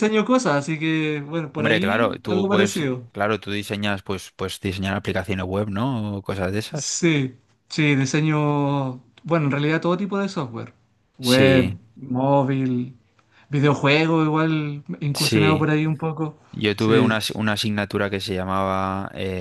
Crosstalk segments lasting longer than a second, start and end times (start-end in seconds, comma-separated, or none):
1.5-3.1